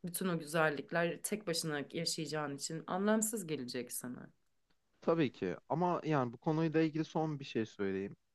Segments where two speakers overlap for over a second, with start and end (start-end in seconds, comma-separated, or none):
none